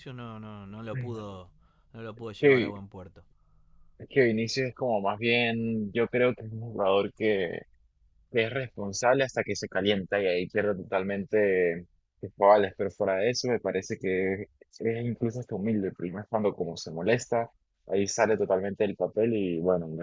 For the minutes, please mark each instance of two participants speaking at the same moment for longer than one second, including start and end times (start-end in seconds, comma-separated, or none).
none